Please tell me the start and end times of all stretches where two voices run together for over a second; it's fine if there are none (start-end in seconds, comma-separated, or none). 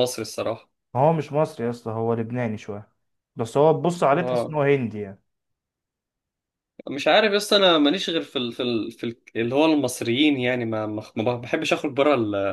none